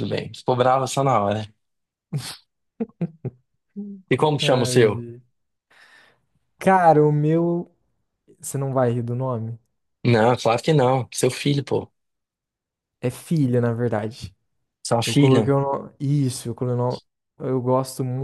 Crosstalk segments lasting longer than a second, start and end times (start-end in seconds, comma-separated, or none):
none